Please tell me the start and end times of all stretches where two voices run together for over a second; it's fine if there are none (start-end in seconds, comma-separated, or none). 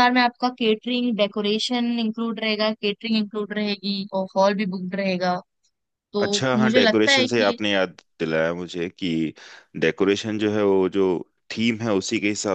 6.2-7.6